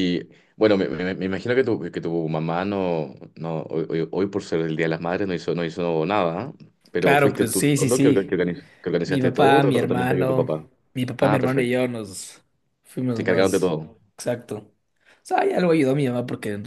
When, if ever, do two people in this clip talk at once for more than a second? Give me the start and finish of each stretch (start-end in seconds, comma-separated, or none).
7.0-8.4, 9.0-10.5